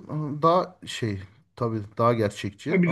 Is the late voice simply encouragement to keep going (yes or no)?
no